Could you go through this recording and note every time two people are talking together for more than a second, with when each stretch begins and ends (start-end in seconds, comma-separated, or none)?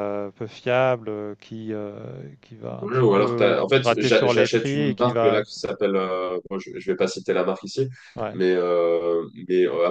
2.8-5.4